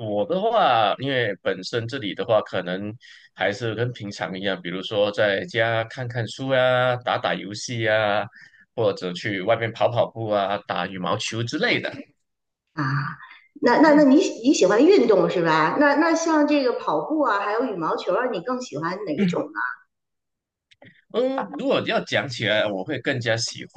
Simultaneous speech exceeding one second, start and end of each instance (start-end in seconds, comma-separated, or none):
none